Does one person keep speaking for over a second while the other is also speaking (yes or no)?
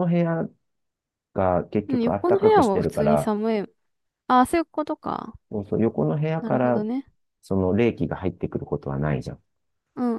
yes